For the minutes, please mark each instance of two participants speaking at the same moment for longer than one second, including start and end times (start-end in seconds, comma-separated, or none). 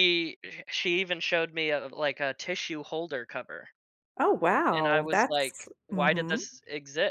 4.7-6.4